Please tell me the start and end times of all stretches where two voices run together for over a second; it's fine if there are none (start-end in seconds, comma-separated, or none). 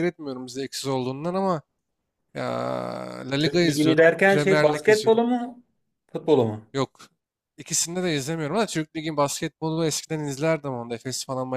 3.4-5.2